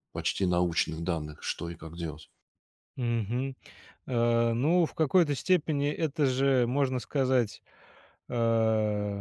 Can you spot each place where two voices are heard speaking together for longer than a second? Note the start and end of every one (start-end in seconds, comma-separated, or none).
none